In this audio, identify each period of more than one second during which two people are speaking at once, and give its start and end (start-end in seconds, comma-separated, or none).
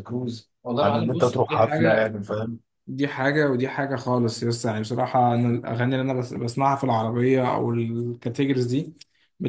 0.6-2.0